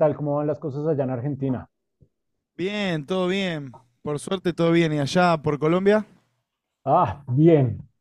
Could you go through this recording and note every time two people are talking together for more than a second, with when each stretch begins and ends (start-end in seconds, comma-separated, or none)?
none